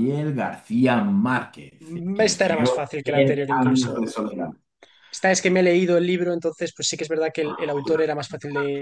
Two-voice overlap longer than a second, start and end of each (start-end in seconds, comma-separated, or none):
2.3-4.2